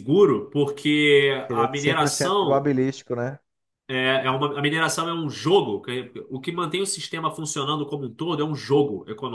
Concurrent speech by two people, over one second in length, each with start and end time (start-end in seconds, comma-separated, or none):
1.4-2.7